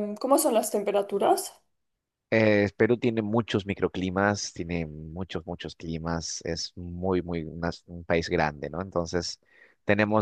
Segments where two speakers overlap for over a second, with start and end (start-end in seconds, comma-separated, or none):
none